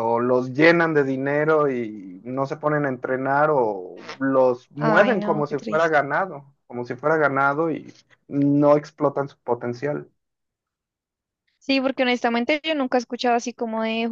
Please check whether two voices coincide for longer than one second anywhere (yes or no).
yes